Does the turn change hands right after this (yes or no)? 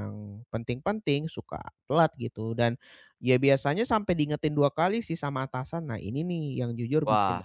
no